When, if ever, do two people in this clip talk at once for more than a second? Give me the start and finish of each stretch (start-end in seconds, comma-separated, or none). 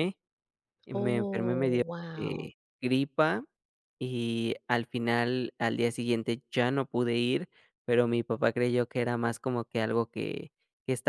0.9-2.5